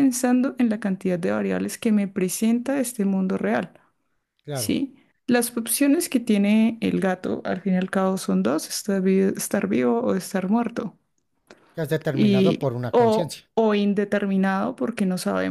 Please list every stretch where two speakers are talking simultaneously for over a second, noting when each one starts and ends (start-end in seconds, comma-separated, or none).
12.1-13.5